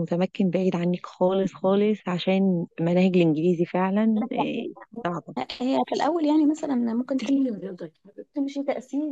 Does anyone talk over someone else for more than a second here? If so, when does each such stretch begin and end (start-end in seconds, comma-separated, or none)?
none